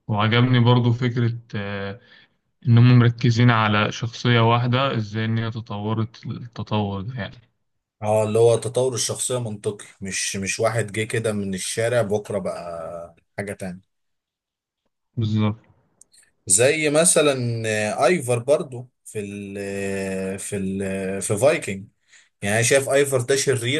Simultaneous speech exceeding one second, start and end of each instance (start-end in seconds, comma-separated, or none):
none